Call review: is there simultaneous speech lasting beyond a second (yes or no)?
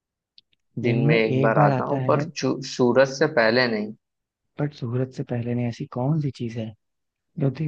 yes